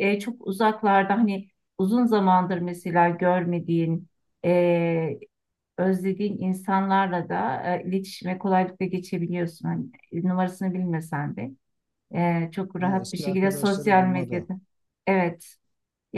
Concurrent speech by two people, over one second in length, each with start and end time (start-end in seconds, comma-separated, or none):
12.8-14.5